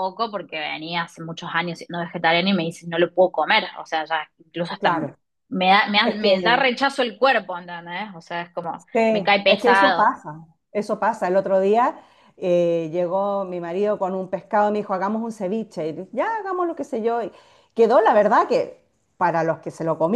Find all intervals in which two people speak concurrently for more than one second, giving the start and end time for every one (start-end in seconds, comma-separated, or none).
8.7-10.1